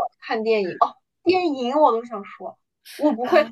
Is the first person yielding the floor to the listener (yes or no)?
no